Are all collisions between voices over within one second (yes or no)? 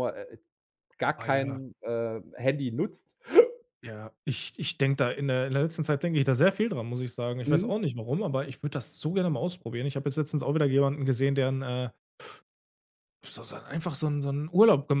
yes